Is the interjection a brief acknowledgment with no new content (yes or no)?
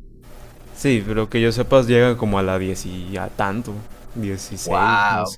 no